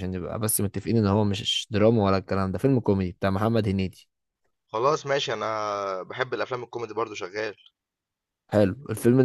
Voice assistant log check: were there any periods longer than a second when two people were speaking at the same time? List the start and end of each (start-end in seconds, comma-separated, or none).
none